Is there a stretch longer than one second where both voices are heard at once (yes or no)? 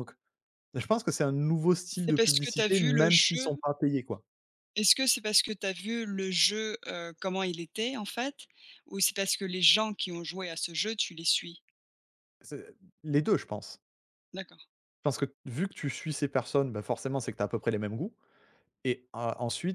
yes